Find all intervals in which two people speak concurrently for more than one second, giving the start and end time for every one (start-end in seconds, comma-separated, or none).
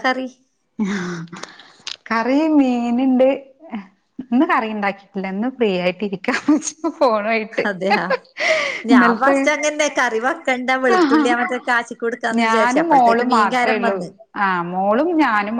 12.4-13.9